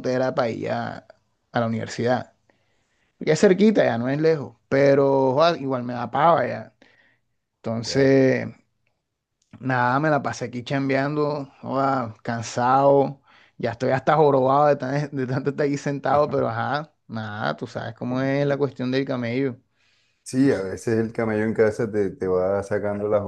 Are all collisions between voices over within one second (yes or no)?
yes